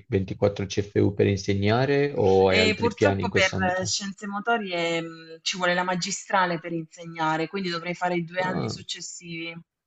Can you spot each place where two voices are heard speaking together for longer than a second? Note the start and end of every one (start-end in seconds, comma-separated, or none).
2.5-4.0